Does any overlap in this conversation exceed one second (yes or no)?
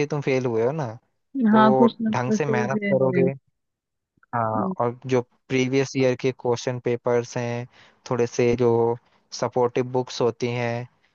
yes